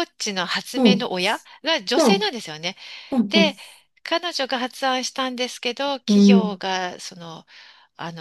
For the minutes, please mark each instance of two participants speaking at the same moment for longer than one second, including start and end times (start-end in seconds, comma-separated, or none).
none